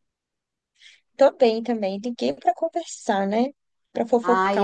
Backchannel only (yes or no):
no